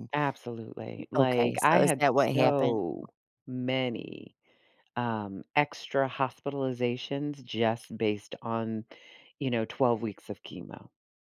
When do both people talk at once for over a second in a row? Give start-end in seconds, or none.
1.2-2.8